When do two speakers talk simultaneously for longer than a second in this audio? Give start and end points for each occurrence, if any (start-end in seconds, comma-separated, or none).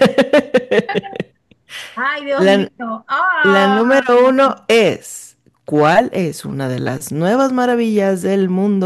none